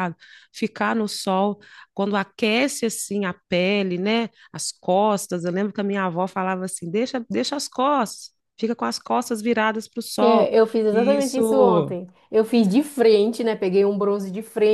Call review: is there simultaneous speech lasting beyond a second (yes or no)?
yes